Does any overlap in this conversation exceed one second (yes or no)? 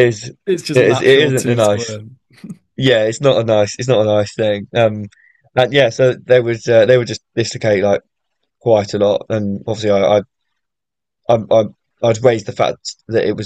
yes